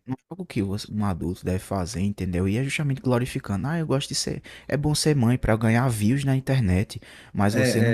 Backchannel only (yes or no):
yes